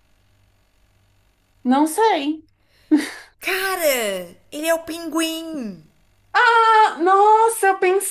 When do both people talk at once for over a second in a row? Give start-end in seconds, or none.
none